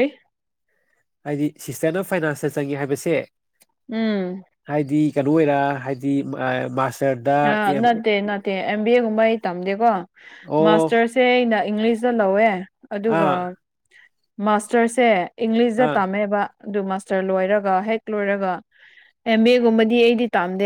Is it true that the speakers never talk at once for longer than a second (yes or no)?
yes